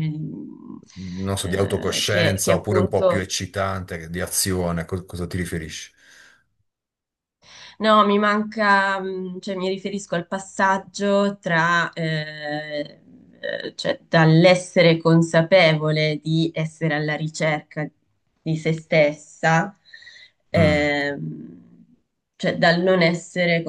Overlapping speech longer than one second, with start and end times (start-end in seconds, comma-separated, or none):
1.4-3.3